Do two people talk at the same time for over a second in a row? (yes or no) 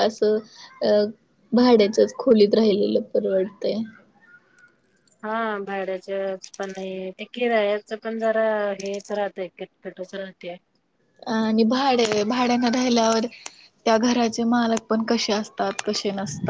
no